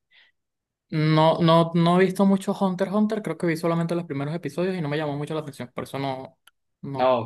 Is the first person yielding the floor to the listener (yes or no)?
yes